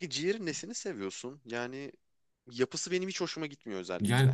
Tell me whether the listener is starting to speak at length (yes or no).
yes